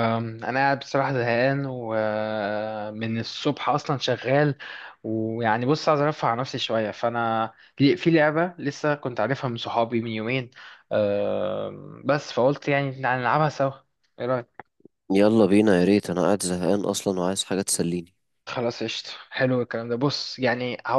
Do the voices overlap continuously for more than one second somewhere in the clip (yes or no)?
no